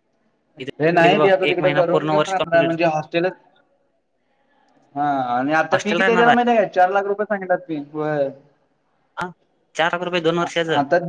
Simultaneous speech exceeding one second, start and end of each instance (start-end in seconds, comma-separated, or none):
0.8-2.7